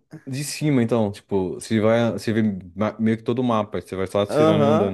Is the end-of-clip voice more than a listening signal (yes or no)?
yes